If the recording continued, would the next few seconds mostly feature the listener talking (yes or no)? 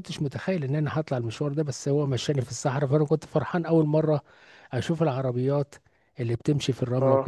no